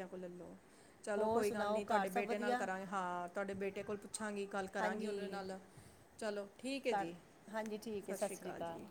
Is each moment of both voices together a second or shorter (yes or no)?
no